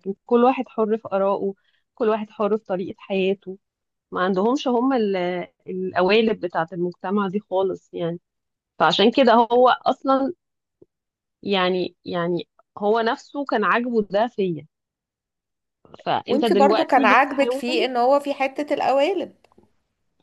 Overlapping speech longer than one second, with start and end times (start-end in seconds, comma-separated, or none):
16.3-17.9